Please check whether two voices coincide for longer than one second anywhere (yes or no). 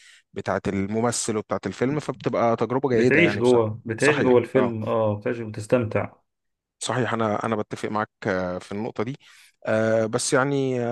yes